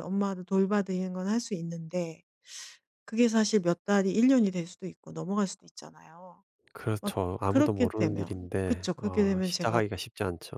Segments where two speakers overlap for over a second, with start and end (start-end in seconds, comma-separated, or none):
7.0-9.8